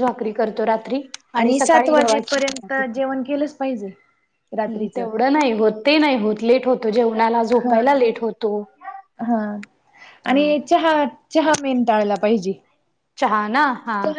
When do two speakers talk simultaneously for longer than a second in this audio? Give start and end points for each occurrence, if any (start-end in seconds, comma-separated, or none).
1.6-3.0